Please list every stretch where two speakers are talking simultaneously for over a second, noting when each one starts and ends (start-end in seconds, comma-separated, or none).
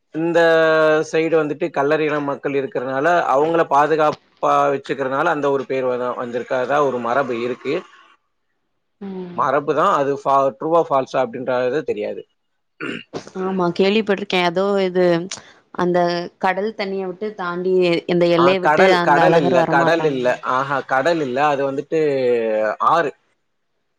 18.4-20.3